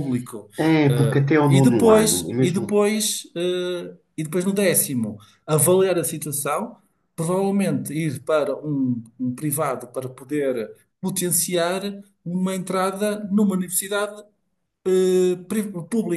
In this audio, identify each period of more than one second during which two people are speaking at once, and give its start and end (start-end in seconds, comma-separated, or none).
0.9-2.8